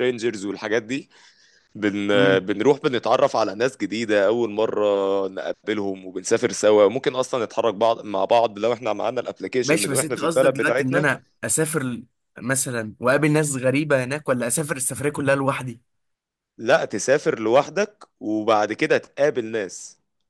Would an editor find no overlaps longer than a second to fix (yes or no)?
no